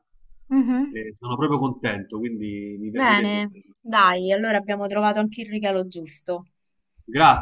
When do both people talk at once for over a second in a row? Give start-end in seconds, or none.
2.9-4.2